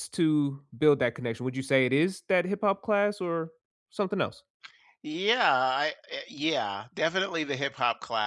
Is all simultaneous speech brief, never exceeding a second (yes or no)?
yes